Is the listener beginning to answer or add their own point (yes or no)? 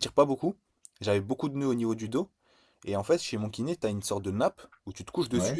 no